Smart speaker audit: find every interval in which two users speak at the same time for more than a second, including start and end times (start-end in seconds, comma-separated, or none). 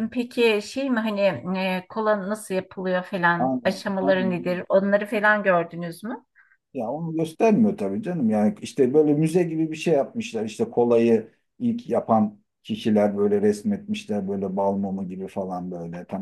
3.4-4.6